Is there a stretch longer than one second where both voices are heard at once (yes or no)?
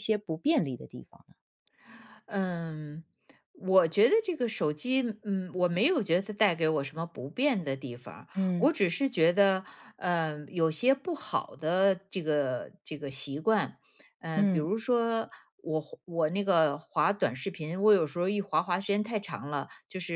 no